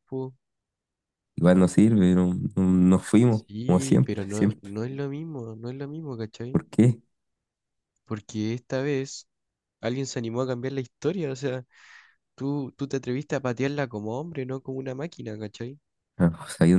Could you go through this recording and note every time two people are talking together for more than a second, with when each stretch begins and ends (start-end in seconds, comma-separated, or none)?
3.3-4.7